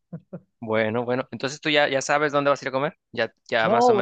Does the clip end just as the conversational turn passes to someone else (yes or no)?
yes